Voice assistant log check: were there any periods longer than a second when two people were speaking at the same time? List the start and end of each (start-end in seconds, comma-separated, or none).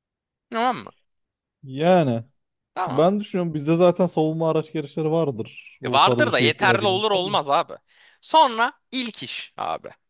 5.8-7.4